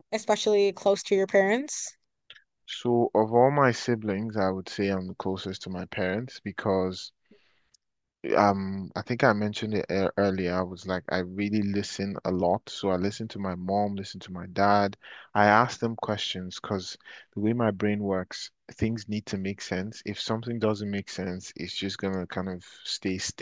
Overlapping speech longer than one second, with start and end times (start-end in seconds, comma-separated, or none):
none